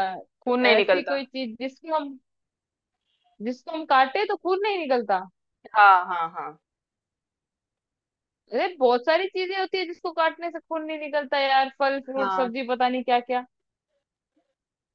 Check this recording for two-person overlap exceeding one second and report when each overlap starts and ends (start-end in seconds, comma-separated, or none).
none